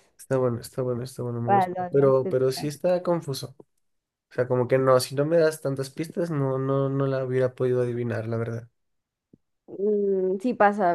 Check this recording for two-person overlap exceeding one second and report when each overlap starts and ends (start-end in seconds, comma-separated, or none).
1.4-2.7